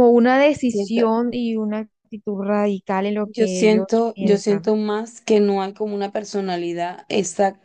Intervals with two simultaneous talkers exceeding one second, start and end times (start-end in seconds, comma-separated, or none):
3.2-4.7